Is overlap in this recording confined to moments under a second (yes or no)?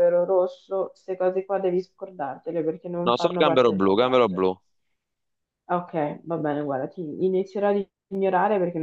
no